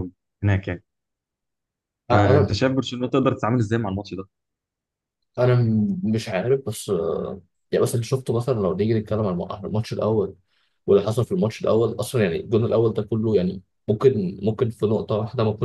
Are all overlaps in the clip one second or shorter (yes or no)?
yes